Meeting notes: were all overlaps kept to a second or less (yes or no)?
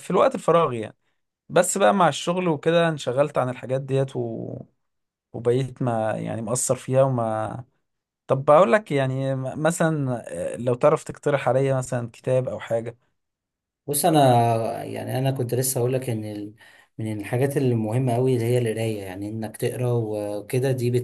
yes